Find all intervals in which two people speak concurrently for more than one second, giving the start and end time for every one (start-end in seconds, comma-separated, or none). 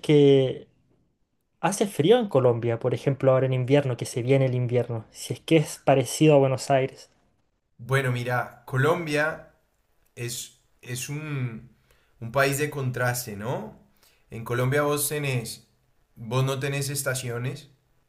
none